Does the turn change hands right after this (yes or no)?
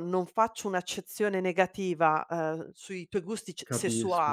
no